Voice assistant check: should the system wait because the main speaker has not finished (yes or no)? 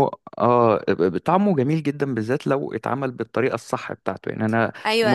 no